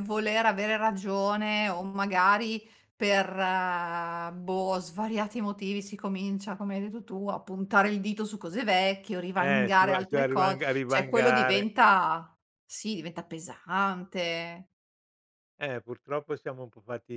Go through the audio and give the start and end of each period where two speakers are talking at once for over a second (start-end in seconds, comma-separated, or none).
9.4-11.7